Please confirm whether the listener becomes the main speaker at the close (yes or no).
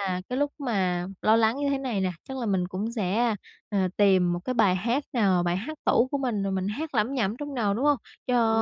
no